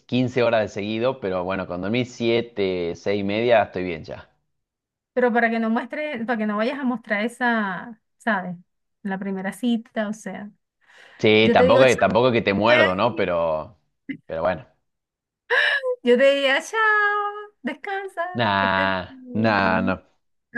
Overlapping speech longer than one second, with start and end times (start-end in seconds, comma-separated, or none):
18.3-20.0